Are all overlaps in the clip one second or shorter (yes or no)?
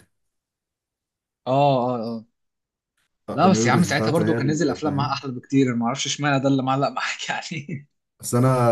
no